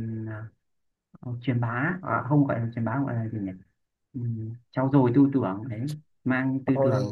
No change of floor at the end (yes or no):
yes